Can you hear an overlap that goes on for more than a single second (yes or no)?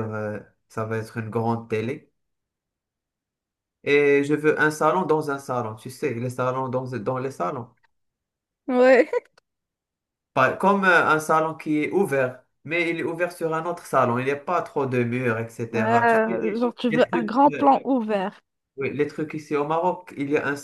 yes